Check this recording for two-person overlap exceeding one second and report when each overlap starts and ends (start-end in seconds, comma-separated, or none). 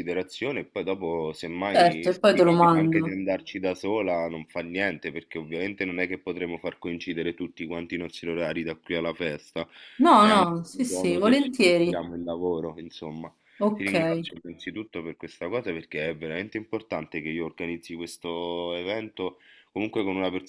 1.7-3.2, 10.2-12.0